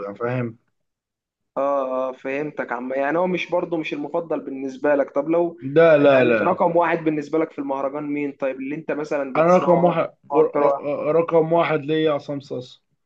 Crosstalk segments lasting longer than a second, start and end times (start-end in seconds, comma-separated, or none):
9.3-10.8